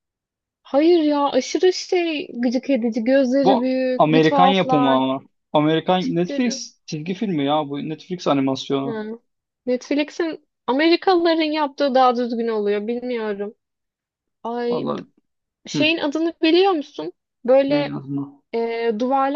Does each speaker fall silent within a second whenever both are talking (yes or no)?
no